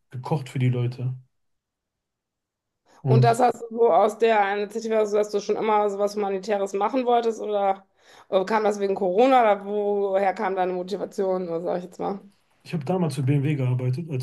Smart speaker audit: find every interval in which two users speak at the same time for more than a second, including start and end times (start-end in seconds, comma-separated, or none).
none